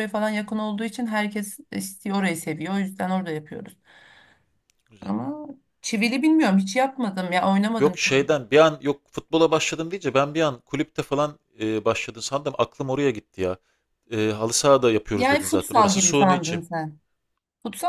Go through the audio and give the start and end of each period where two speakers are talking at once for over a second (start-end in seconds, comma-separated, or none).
15.1-16.6